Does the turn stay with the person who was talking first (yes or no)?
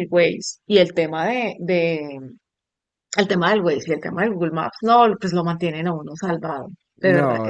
no